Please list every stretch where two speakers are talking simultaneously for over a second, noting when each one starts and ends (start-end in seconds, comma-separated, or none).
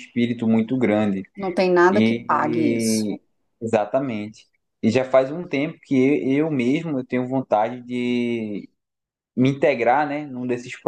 1.9-3.1